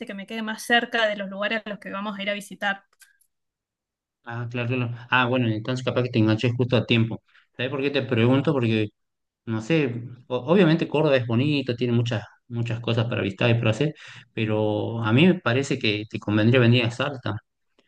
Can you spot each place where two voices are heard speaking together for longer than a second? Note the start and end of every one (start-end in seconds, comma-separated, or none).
none